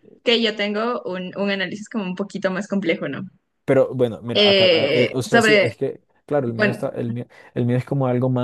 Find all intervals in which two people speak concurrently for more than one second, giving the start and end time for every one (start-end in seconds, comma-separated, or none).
4.3-5.8